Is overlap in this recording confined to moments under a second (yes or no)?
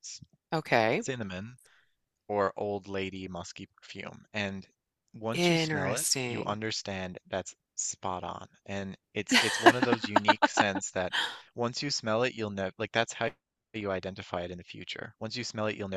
no